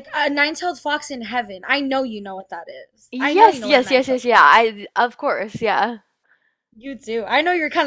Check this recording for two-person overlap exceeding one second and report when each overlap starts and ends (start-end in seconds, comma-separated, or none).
3.1-4.6